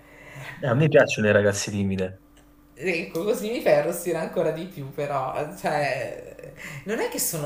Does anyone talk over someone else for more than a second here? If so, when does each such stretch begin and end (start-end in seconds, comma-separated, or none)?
none